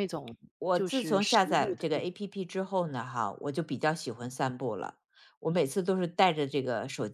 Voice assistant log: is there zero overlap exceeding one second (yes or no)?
no